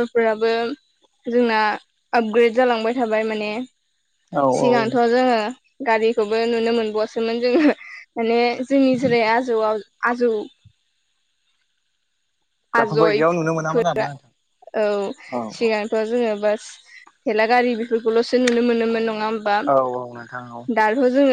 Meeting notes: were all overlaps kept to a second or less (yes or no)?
no